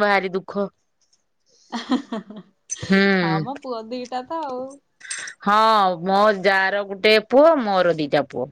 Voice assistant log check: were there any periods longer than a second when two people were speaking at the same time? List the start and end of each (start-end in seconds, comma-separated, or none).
none